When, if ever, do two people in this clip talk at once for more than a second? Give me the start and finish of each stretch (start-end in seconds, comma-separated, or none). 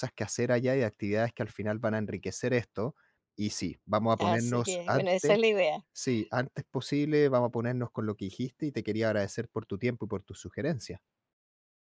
4.2-5.4